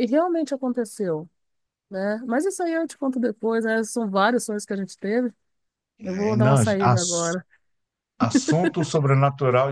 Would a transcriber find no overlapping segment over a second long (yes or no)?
no